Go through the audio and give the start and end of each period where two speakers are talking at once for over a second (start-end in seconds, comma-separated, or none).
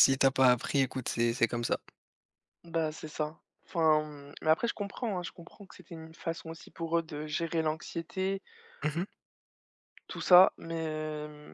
none